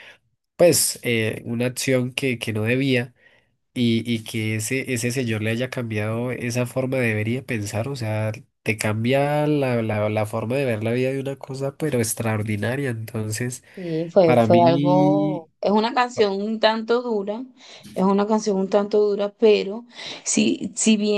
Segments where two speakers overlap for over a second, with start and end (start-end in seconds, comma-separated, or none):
14.2-15.5